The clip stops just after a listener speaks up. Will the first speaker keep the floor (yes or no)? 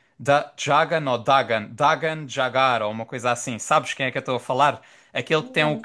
yes